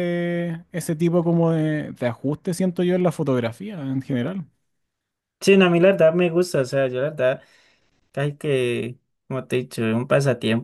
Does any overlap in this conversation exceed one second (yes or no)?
no